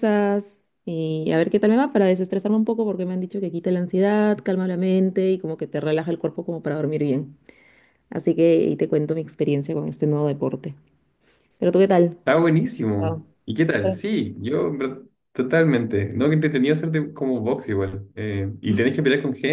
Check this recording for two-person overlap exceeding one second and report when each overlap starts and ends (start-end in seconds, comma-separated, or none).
none